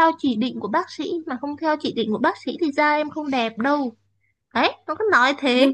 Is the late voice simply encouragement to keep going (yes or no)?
no